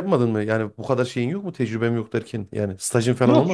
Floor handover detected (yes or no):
yes